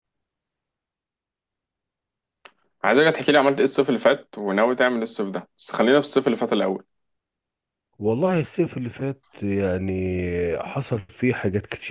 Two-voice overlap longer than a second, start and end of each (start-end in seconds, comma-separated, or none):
none